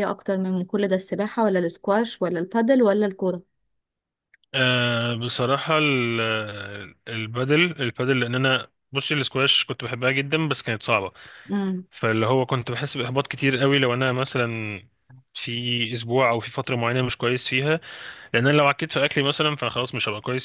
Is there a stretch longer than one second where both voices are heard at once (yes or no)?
no